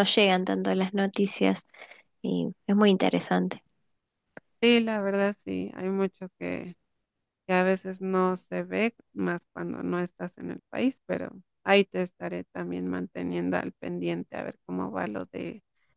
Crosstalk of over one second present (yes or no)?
no